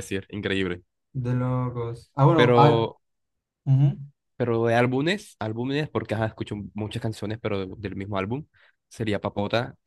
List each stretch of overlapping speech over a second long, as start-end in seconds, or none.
none